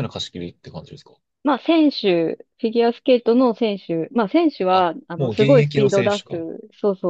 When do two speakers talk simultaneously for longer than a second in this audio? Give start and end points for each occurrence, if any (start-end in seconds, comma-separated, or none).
4.7-6.4